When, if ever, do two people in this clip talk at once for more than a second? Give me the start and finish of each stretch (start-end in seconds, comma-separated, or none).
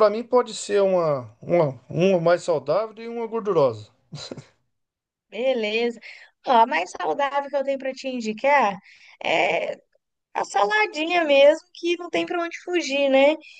none